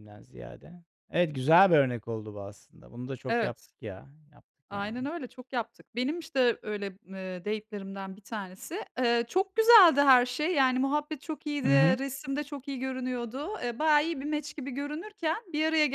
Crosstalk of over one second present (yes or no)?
no